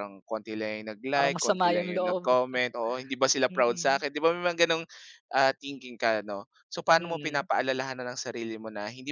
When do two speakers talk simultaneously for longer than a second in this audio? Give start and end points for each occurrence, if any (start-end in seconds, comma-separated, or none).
1.1-2.4